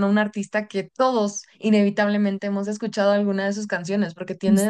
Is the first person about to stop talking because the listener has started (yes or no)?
no